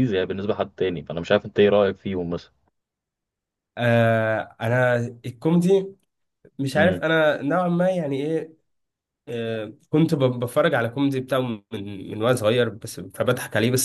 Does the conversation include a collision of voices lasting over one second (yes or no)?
no